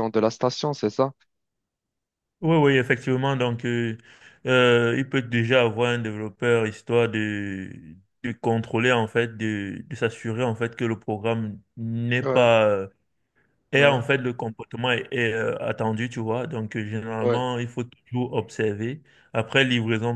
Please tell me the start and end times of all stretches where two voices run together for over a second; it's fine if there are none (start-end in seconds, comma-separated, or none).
none